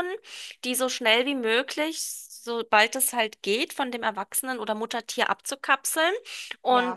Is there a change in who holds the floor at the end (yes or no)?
no